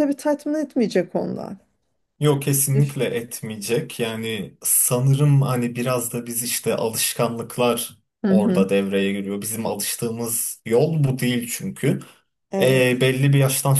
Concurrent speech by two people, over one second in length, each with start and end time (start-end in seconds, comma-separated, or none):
none